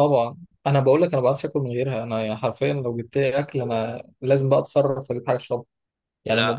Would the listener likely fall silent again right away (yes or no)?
yes